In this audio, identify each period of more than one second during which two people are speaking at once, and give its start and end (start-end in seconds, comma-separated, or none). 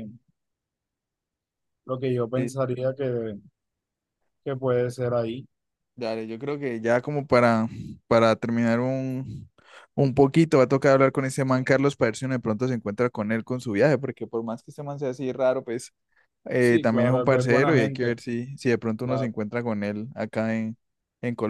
16.6-18.1